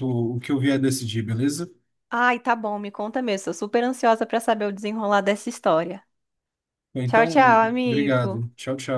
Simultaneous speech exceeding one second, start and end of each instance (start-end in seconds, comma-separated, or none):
7.1-8.4